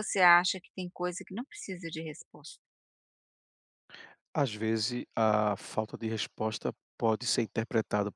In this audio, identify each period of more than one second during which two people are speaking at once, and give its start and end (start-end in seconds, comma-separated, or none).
none